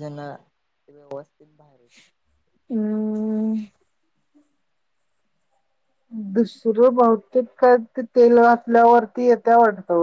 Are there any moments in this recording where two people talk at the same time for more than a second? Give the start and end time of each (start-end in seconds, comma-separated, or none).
none